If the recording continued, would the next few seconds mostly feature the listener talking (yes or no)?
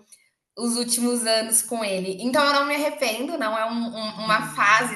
no